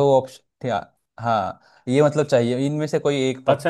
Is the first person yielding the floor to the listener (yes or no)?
yes